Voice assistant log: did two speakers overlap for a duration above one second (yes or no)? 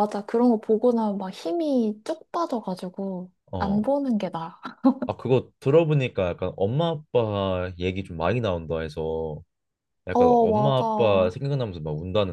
yes